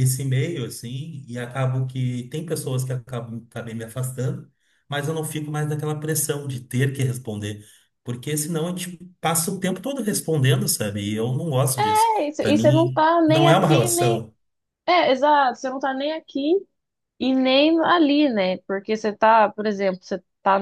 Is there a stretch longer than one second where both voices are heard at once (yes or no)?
yes